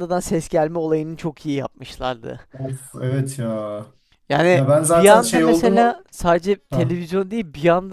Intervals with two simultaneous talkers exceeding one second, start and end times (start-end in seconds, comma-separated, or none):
4.5-6.0